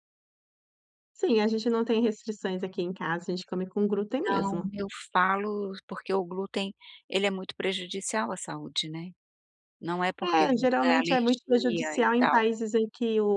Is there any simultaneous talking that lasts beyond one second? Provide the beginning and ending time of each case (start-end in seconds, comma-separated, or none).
10.2-12.4